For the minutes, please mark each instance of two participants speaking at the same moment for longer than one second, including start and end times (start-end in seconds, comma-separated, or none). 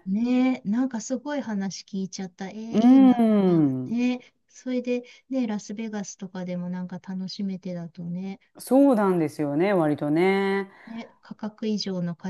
none